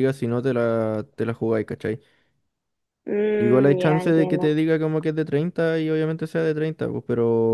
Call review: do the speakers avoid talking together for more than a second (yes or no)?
no